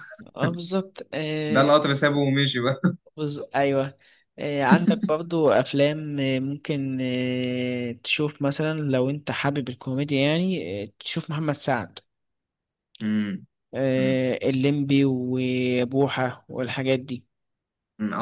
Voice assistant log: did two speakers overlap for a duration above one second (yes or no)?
no